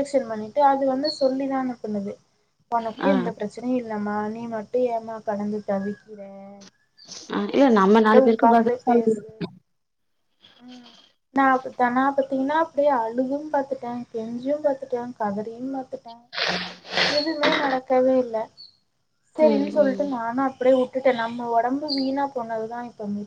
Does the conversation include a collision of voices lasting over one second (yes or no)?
yes